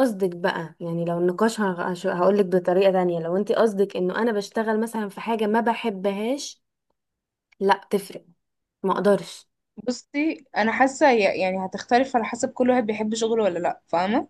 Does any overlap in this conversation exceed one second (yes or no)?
no